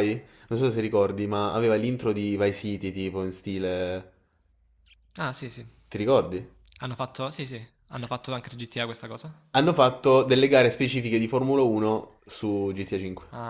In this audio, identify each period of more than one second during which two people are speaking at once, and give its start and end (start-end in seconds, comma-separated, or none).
none